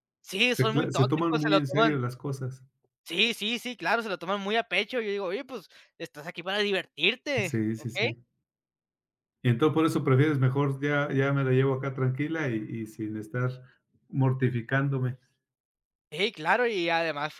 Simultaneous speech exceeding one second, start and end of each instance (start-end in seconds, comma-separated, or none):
0.5-1.9